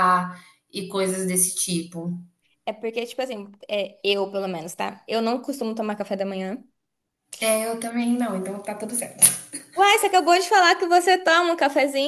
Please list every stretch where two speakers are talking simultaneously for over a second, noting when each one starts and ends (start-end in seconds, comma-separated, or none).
none